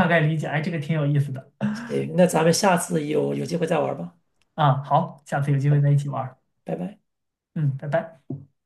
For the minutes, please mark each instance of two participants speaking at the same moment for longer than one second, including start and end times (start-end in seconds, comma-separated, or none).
none